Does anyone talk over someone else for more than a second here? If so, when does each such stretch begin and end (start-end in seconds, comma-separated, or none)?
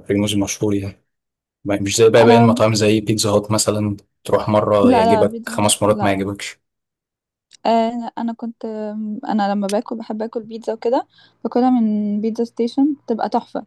4.8-6.2